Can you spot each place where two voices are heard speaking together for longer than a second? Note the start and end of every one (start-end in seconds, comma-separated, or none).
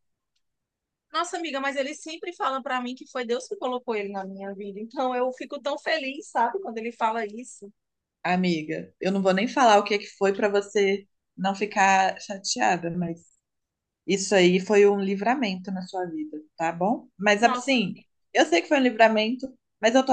none